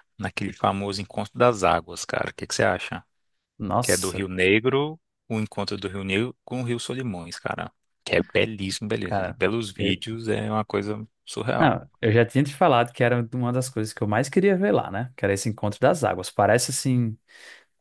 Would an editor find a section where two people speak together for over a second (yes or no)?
no